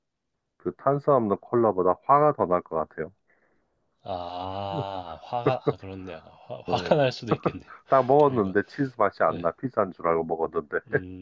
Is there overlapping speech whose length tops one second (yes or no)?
no